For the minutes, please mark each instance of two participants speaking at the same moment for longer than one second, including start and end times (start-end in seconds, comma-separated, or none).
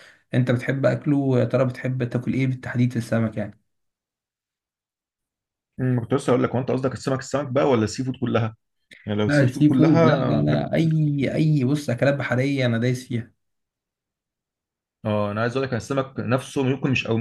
9.2-11.3